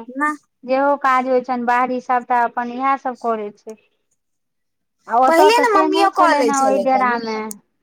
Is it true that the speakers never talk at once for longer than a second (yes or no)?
no